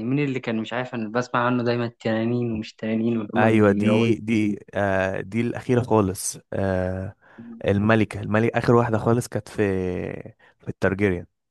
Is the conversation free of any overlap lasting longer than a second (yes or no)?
no